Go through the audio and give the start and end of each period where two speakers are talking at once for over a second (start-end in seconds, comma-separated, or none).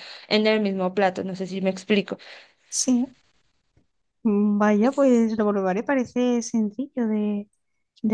none